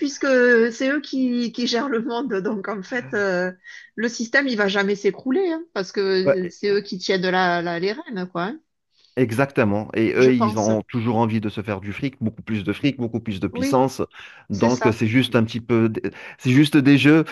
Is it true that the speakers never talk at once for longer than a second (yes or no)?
yes